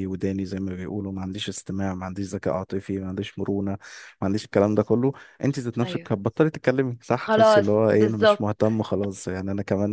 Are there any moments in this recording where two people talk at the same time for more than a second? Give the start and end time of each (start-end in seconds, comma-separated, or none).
7.1-8.5